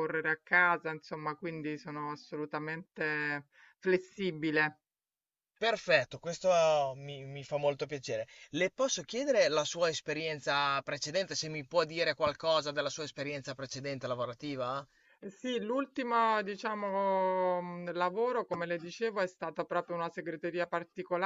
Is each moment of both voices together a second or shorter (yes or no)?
yes